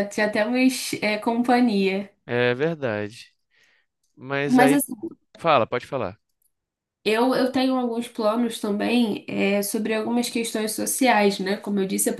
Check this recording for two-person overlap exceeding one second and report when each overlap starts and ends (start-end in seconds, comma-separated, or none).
none